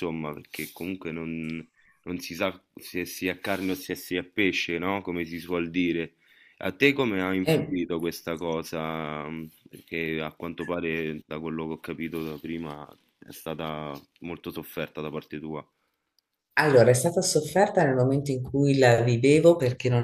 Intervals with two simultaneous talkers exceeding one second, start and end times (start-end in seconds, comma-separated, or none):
none